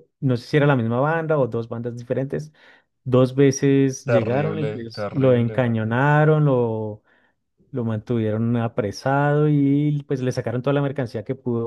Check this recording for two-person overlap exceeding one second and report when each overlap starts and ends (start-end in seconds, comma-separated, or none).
4.1-5.7